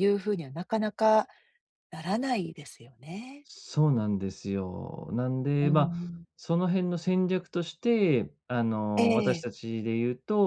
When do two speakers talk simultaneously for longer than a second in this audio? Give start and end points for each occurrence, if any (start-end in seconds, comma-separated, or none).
none